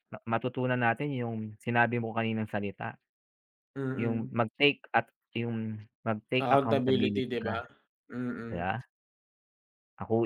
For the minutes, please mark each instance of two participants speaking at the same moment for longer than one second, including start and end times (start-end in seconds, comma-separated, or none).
6.3-7.5